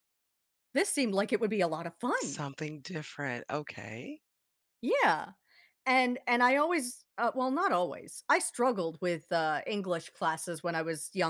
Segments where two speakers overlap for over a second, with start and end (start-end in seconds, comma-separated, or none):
none